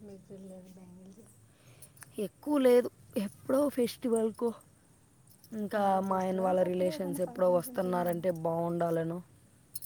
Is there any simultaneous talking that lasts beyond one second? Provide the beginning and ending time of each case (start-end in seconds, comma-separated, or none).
5.9-8.1